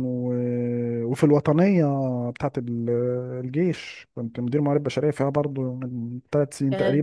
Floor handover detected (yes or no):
yes